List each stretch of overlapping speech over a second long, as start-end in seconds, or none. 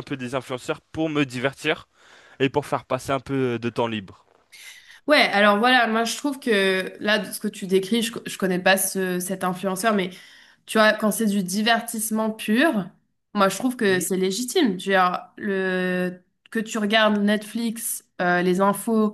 none